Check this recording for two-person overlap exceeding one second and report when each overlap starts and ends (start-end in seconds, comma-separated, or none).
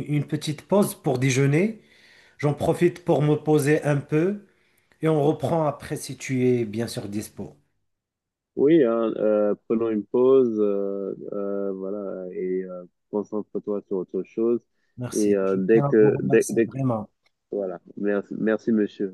15.2-16.7